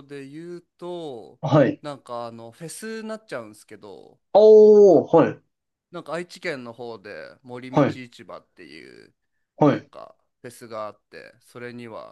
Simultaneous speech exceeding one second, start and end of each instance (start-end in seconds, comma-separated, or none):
none